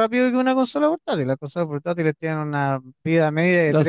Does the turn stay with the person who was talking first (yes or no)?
no